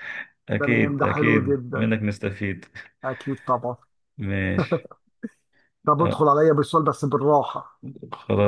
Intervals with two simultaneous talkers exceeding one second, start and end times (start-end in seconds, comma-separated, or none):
0.6-1.9